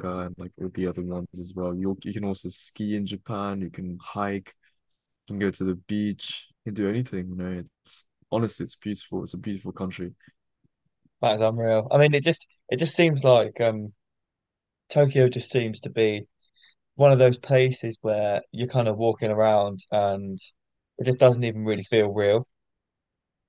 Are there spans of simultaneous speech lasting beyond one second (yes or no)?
no